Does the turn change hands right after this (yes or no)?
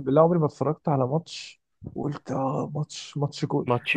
no